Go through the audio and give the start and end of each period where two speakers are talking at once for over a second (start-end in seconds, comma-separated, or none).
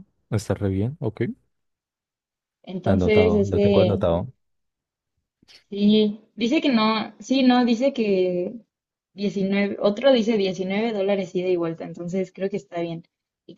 2.8-4.0